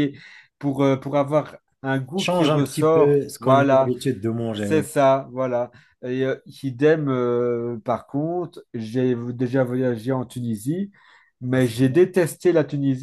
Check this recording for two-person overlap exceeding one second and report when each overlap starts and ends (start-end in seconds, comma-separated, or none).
2.2-3.9